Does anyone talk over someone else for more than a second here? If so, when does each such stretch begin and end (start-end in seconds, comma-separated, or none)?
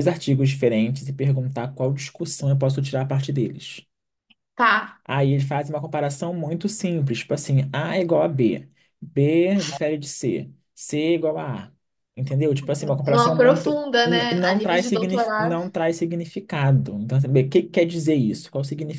13.1-15.6